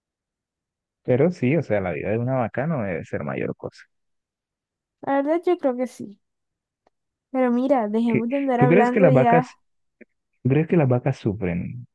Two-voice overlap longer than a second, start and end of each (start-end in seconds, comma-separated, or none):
8.1-9.5